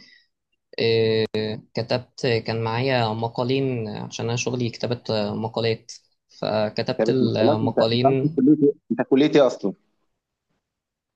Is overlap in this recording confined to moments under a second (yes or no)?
no